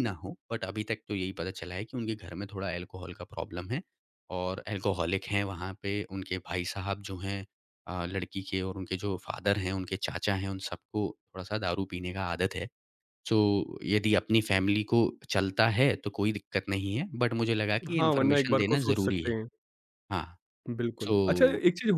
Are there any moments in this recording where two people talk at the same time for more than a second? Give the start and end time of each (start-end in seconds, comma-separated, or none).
18.0-19.3